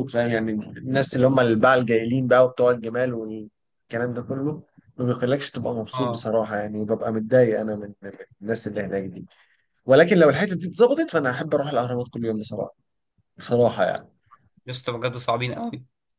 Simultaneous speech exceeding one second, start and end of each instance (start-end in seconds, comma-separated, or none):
none